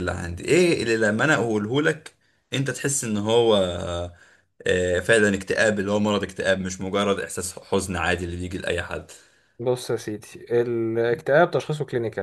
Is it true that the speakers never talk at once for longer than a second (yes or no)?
yes